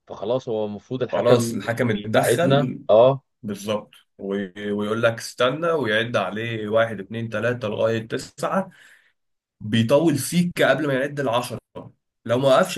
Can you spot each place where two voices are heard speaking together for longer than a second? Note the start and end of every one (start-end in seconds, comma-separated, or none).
1.1-2.8